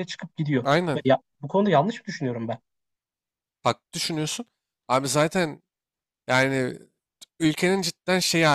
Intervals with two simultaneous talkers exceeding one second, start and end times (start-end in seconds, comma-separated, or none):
none